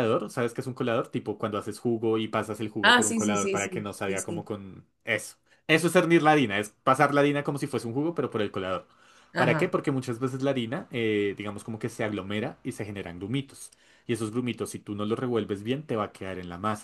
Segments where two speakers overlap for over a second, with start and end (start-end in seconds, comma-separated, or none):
2.8-4.5